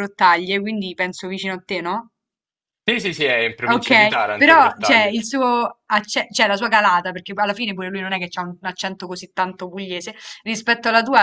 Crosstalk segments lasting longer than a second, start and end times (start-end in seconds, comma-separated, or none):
3.6-5.1